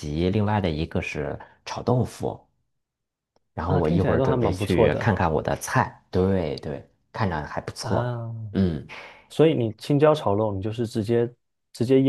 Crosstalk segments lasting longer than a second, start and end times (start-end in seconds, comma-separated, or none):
3.6-5.1